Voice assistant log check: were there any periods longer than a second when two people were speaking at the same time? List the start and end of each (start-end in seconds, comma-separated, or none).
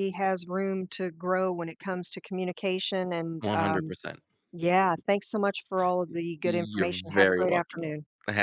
6.4-7.8